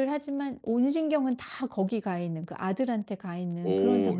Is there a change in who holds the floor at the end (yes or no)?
yes